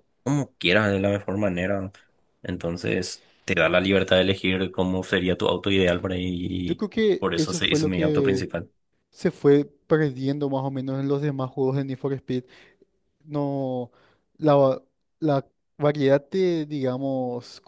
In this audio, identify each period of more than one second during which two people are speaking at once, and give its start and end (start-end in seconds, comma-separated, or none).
6.7-8.5